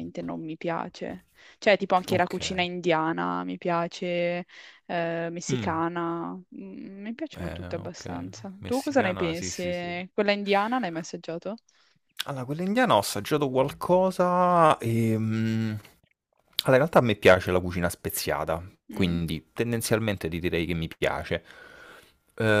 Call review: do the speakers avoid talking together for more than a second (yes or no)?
no